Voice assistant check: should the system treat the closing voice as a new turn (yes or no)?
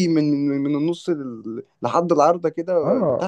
yes